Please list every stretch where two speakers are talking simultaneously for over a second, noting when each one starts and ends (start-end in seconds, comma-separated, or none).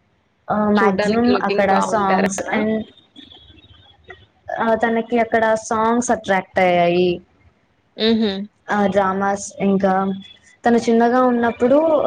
0.8-2.6